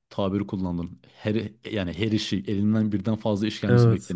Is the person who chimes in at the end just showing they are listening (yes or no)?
yes